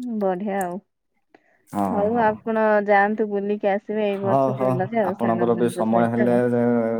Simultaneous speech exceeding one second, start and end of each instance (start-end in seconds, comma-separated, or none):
4.2-6.4